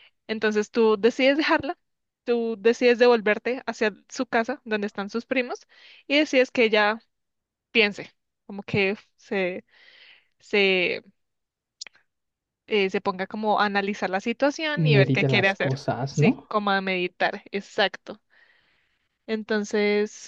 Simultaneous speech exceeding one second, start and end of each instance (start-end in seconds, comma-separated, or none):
14.8-16.5